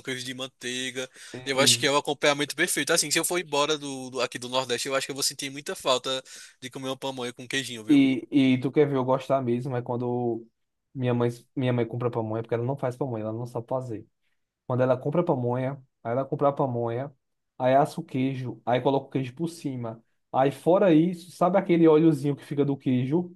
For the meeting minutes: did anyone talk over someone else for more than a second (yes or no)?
no